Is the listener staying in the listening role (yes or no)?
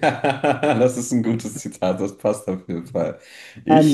no